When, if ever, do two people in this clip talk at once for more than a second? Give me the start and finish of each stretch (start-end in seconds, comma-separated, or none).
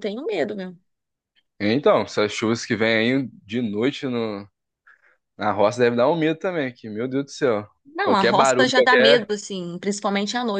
8.0-9.3